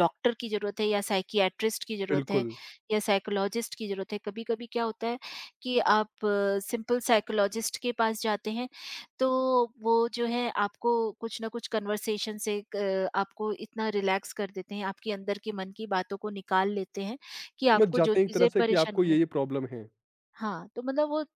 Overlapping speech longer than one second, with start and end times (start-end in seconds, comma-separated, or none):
17.7-19.2